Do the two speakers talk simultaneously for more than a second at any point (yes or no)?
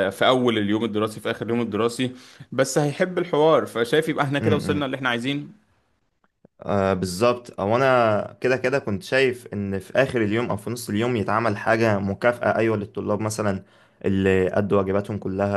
no